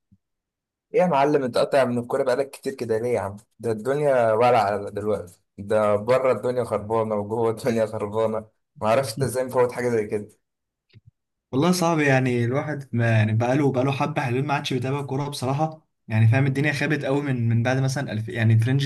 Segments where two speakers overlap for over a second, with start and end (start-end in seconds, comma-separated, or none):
none